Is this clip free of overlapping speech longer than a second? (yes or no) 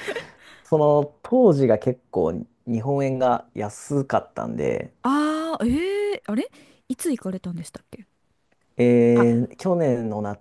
yes